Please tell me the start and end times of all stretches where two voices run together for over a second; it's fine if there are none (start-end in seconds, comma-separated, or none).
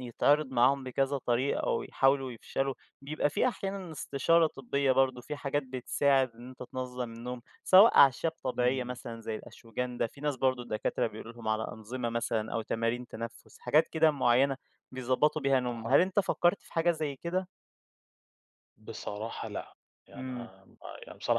none